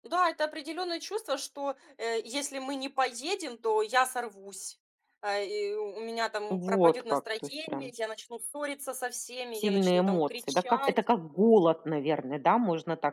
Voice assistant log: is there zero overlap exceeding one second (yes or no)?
no